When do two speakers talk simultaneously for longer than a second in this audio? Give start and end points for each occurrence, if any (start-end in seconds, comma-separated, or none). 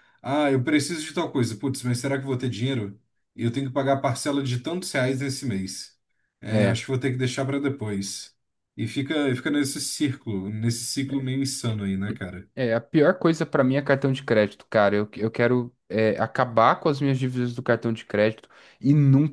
none